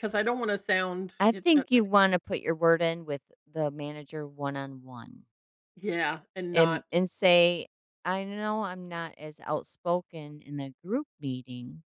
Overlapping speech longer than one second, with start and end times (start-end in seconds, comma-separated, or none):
none